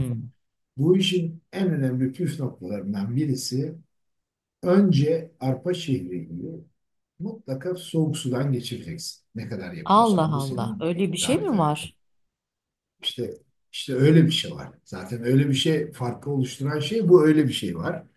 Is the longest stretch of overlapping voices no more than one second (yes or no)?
no